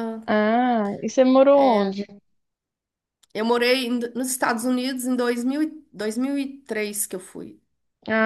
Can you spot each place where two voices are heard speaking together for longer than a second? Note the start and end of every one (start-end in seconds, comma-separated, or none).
none